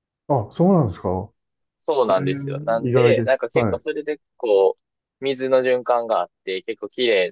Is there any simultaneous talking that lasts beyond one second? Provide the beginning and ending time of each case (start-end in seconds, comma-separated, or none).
2.1-3.8